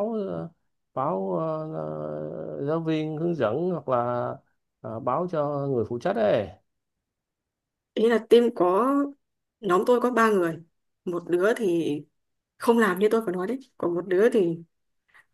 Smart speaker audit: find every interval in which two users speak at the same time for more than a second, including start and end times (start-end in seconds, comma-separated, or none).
none